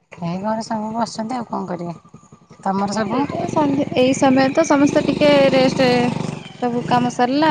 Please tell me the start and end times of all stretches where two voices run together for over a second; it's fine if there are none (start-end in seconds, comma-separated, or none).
none